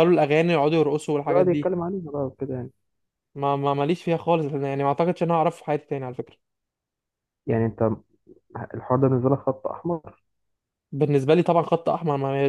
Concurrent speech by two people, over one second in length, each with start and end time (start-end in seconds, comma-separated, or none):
none